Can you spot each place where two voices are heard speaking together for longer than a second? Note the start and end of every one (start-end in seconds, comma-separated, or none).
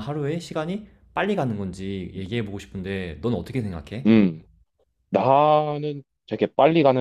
none